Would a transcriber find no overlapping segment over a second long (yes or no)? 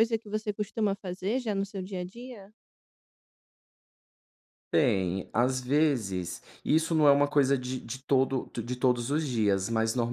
yes